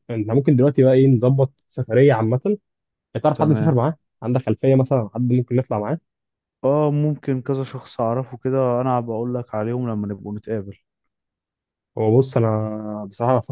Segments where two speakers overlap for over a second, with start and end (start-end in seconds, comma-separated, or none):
none